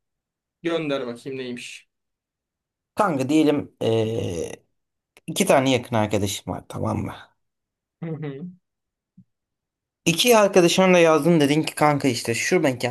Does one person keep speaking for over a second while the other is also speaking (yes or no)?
no